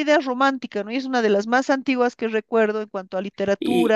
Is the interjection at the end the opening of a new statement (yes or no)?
no